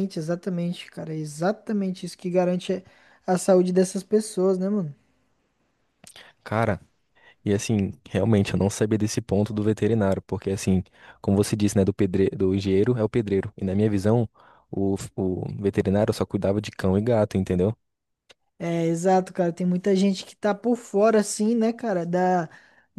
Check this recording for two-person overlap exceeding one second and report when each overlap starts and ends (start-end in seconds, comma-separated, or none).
none